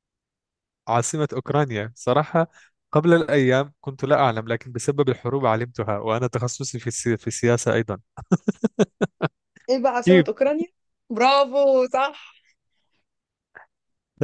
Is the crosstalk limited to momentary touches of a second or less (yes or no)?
yes